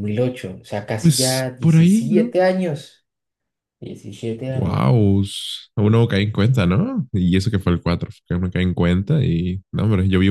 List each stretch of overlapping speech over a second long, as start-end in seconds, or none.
1.0-2.4